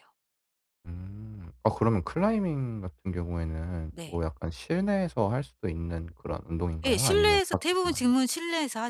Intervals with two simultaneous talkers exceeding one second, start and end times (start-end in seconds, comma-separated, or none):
6.8-8.1